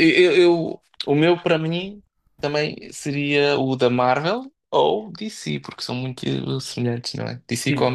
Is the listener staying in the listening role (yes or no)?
no